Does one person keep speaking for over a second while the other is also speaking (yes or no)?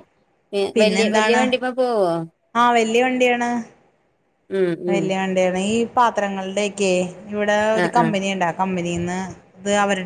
no